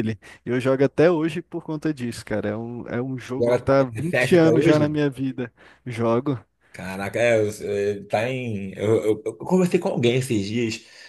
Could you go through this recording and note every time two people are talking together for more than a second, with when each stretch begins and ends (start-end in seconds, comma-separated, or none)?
3.4-4.8